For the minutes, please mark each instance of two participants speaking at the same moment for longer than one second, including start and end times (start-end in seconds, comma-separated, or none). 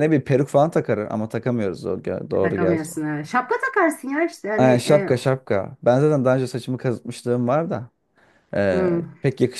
none